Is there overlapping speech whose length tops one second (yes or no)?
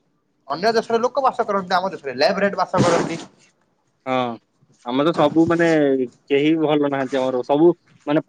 no